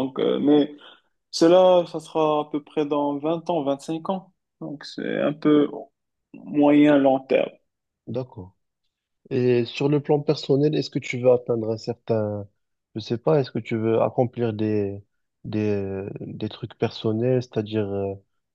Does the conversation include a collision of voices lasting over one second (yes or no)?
no